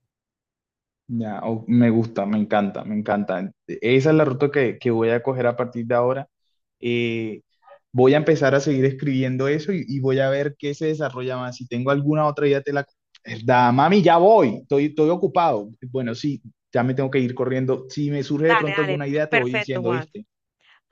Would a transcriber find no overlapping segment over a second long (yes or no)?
no